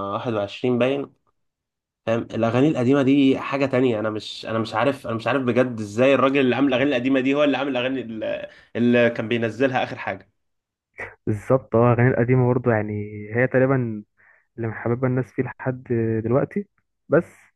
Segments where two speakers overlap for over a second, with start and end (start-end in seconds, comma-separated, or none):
none